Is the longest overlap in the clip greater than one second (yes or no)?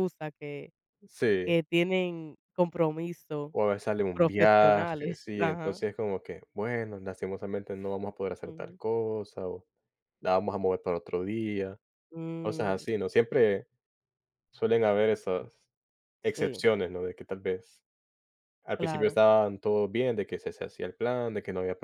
yes